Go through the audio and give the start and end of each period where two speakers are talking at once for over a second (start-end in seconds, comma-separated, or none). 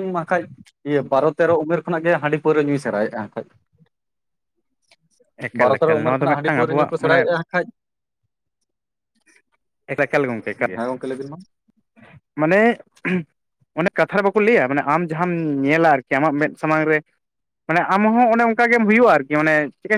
5.6-7.2